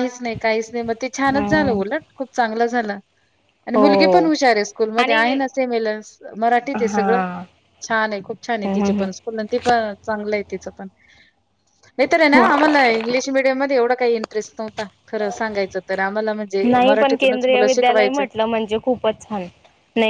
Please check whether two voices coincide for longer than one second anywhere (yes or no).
yes